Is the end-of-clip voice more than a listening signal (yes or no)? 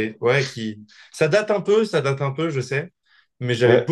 no